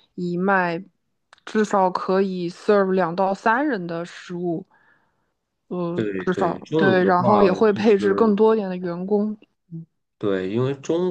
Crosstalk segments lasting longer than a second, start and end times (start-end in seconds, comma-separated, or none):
5.9-8.3